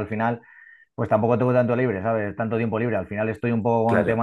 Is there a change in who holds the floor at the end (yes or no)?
no